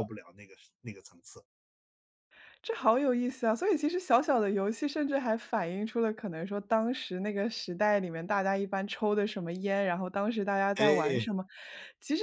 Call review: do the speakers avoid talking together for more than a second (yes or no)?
yes